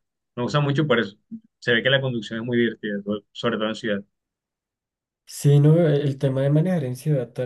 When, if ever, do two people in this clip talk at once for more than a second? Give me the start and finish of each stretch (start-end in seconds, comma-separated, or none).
none